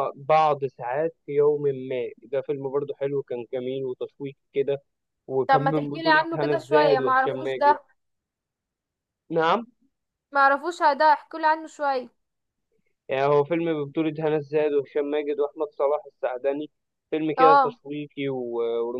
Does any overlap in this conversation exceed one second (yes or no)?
yes